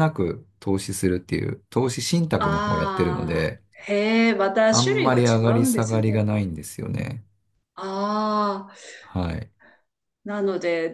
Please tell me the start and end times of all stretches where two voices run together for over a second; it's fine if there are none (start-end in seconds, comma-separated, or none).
2.4-3.6, 4.7-6.2